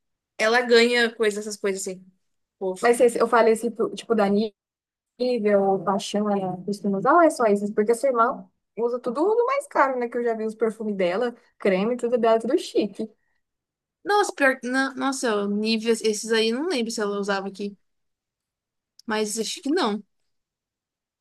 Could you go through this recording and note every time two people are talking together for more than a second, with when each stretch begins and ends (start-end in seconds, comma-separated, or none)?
none